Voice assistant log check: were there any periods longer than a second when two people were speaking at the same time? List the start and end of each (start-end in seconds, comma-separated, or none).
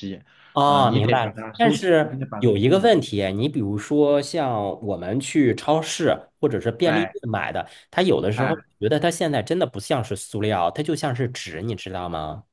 0.6-2.9